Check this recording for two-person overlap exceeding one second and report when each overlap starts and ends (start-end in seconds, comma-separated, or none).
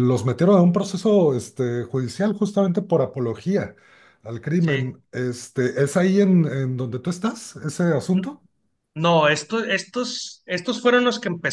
none